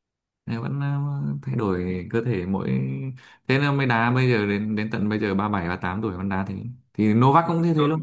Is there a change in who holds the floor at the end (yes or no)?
no